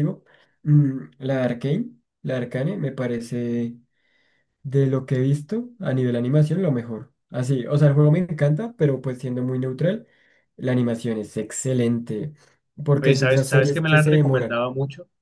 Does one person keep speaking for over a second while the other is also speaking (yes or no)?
yes